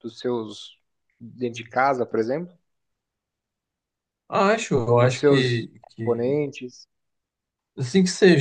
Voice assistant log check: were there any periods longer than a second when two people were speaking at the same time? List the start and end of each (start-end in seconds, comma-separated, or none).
4.9-6.4